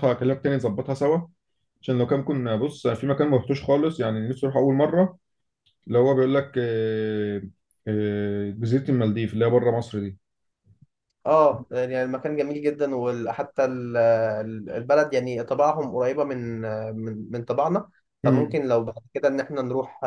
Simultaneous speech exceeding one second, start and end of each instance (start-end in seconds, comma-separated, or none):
none